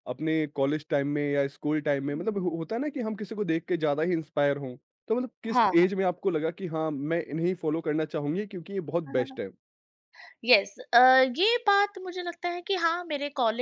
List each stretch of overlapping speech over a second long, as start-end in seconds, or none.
none